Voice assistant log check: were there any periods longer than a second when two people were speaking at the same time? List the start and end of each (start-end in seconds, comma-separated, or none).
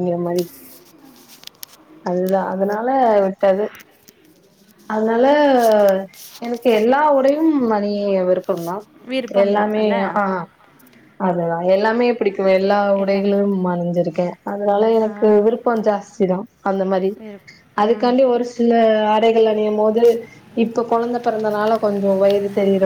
none